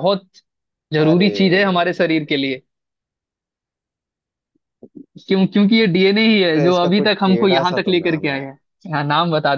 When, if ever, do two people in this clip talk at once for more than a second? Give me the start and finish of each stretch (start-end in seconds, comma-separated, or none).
6.5-8.4